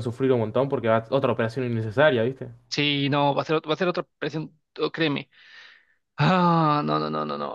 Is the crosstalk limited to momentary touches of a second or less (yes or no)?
yes